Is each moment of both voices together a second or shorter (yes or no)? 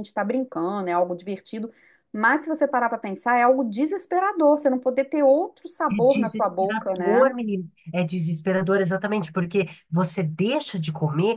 no